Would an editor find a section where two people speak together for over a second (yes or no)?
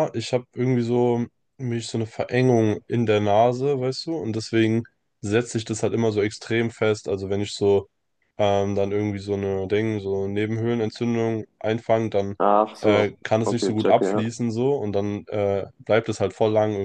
yes